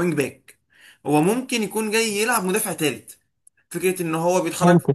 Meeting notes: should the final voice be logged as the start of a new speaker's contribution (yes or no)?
no